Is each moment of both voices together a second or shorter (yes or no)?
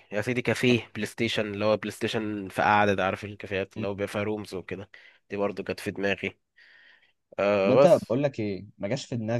yes